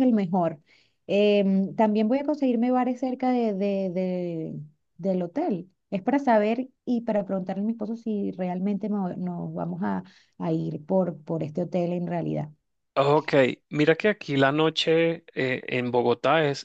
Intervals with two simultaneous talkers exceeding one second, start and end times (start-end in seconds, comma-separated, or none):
none